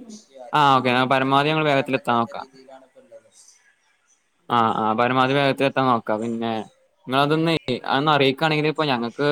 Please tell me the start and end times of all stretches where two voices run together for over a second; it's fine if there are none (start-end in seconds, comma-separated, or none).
1.1-2.5